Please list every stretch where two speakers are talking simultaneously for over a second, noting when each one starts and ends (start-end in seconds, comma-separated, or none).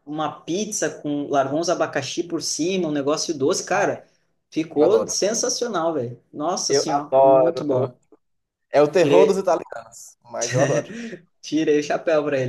6.7-7.9